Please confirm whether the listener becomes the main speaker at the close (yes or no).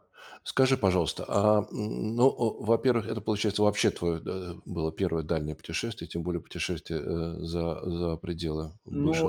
yes